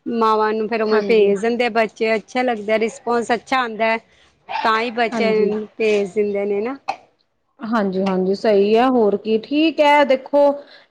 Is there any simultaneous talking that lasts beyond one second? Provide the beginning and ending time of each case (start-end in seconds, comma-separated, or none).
none